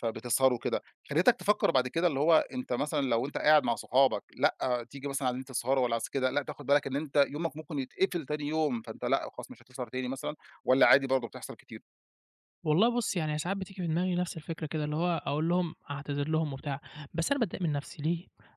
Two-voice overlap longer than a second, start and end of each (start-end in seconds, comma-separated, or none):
none